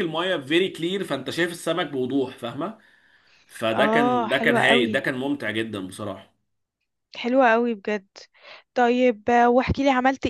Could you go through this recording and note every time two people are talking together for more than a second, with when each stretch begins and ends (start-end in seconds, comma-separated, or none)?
3.7-5.0